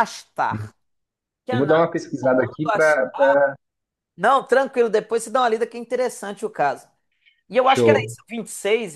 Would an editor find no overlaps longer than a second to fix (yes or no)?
no